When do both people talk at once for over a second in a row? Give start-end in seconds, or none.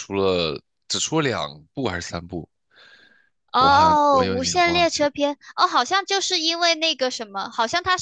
3.6-5.1